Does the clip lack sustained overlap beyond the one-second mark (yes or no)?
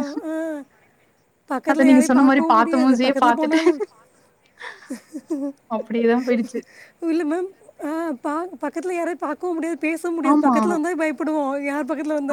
no